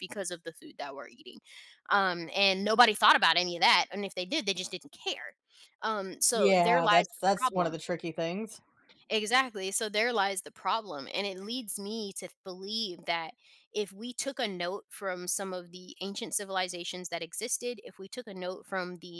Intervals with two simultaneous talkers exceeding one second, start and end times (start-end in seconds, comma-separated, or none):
6.3-7.8